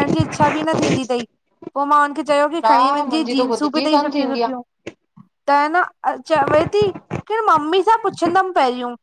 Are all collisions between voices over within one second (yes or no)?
no